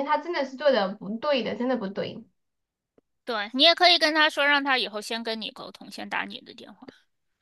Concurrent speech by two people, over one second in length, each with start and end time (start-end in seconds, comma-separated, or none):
none